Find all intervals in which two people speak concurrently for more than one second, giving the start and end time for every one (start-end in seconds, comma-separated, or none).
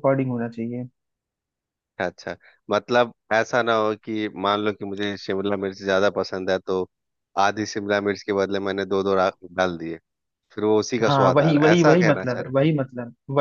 11.1-12.5